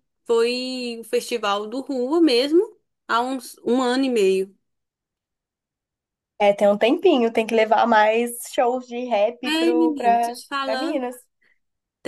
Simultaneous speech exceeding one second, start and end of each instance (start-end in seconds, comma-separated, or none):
9.5-11.1